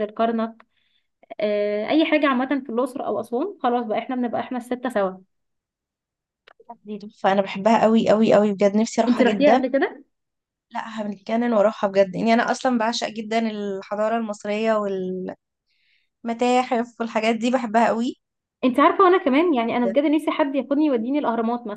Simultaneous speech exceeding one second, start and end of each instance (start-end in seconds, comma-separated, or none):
none